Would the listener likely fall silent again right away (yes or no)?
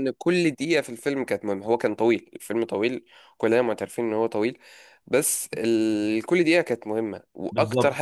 yes